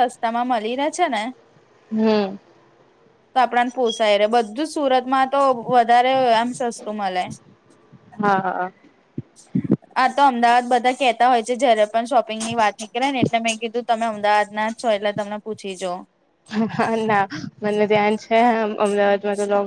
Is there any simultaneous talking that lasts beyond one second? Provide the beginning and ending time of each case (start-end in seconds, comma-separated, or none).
none